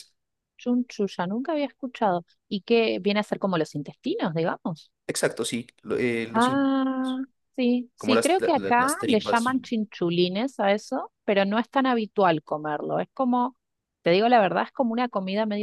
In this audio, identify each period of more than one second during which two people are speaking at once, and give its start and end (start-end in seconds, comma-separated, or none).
8.0-9.4